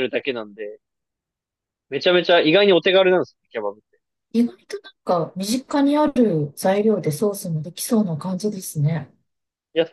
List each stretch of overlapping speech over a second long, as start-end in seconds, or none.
none